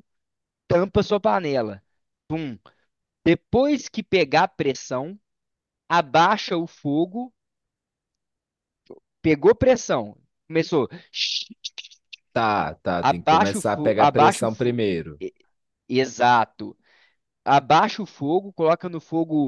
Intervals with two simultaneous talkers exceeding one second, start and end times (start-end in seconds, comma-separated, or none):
13.0-14.8